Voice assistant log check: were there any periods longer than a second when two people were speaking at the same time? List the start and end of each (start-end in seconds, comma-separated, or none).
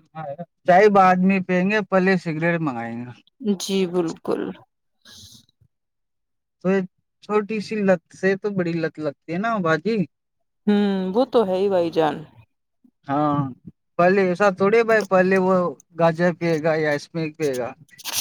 none